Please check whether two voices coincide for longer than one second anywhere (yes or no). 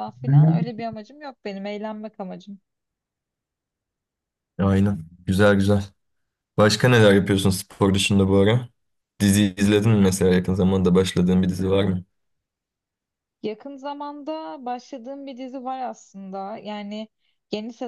no